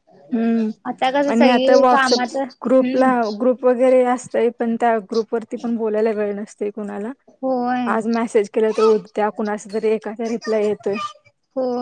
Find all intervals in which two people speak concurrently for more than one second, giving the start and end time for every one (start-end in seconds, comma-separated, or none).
1.3-3.1